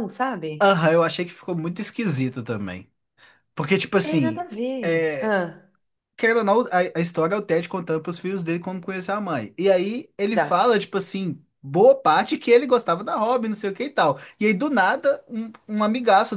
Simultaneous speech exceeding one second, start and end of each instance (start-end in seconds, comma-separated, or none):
none